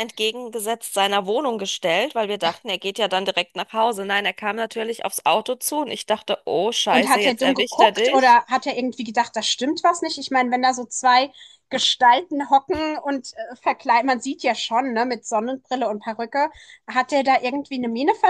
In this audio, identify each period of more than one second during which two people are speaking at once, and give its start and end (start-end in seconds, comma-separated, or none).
6.9-8.4